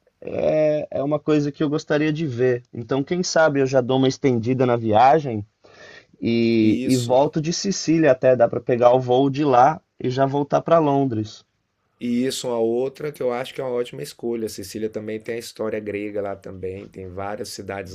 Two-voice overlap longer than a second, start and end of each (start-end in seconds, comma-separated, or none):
none